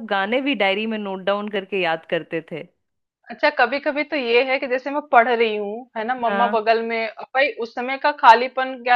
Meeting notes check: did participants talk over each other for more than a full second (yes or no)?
no